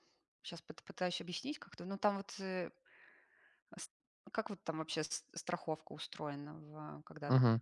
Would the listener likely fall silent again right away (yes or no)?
no